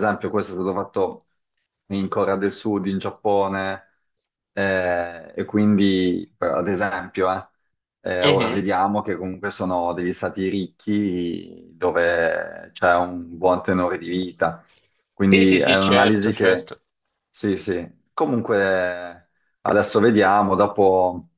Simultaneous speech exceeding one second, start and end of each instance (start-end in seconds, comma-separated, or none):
15.3-16.7